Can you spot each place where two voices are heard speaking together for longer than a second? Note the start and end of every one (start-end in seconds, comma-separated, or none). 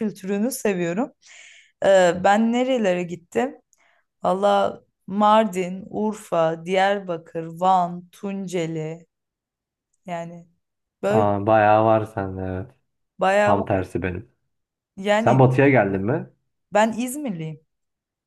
none